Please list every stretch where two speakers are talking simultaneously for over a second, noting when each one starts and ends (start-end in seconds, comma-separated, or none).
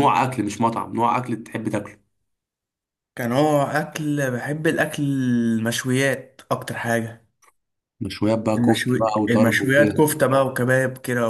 8.6-10.0